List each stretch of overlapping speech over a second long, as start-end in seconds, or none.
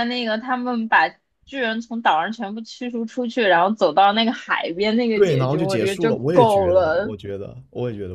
5.1-7.1